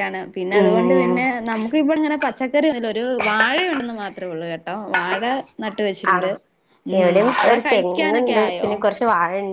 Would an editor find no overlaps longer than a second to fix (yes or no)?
no